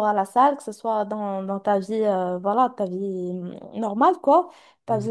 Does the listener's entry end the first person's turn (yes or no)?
no